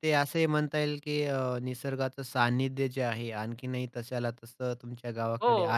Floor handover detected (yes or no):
yes